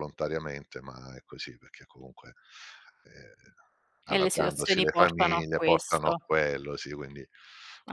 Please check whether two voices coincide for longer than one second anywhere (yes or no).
yes